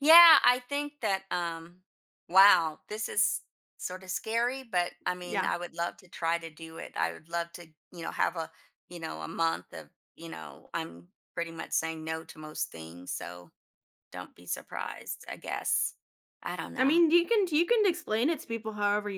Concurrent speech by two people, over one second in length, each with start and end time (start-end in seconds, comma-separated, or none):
none